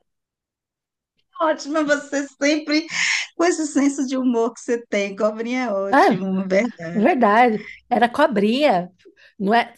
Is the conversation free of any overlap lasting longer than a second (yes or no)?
yes